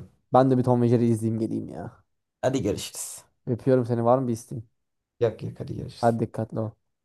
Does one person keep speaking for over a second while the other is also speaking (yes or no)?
no